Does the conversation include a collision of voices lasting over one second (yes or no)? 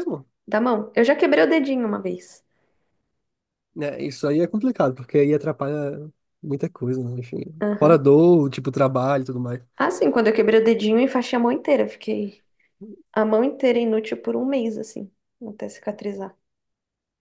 no